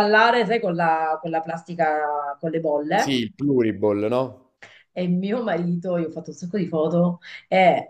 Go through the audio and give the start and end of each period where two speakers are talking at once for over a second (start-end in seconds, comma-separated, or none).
none